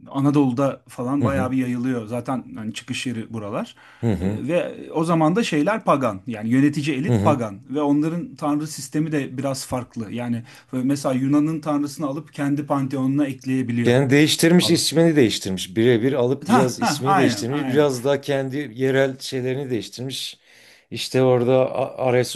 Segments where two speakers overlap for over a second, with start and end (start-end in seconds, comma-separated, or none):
16.5-17.9